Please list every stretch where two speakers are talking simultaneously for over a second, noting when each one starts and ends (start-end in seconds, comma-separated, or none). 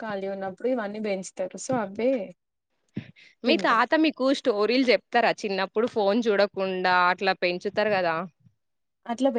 none